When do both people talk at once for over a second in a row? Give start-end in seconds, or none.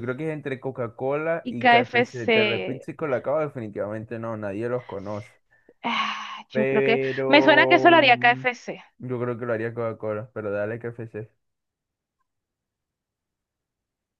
1.4-2.9, 6.5-8.4